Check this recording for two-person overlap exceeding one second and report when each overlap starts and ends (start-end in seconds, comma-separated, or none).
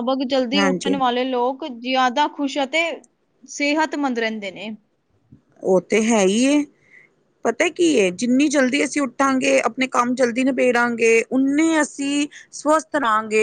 none